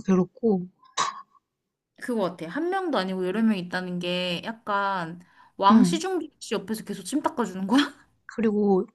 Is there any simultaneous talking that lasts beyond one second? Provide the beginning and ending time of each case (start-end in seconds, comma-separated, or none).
none